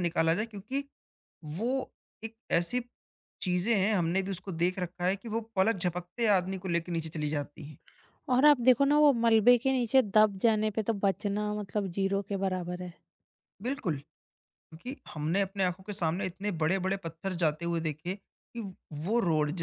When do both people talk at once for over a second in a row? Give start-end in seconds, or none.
none